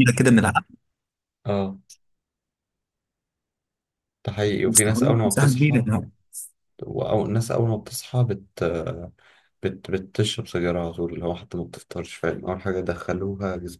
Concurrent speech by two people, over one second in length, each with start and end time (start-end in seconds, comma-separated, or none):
4.7-5.8